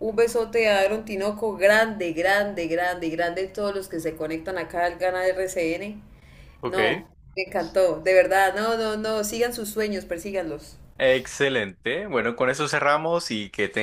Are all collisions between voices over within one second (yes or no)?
yes